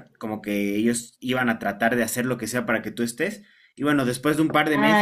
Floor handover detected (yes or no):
no